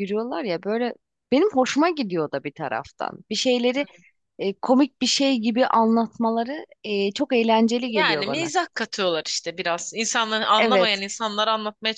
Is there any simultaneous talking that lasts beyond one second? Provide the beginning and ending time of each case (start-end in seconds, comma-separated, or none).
none